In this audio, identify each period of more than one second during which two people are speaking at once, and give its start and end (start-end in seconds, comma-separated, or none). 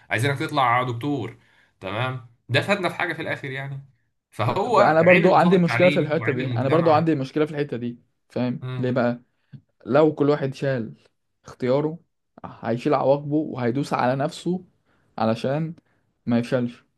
4.8-7.1